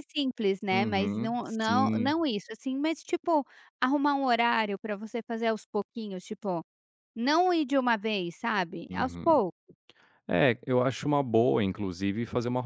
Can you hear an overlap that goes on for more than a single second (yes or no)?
yes